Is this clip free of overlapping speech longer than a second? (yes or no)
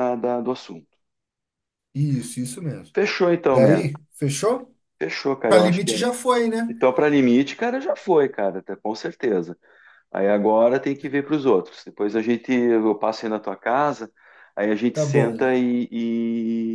yes